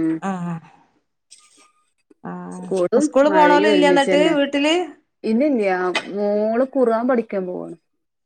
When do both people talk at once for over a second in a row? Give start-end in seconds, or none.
2.6-4.3